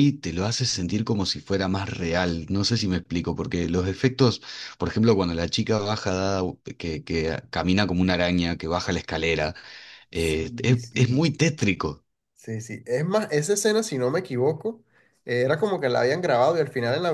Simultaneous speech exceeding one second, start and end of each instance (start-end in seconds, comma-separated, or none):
10.1-11.4